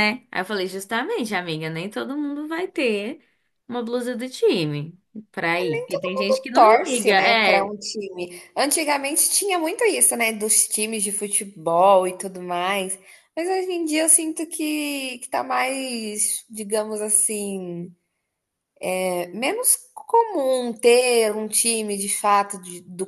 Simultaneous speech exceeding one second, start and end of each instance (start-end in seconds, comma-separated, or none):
5.9-7.7